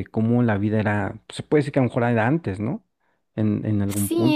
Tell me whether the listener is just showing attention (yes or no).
no